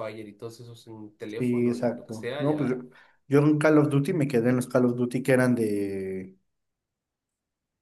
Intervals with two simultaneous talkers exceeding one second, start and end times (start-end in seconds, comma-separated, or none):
1.4-2.8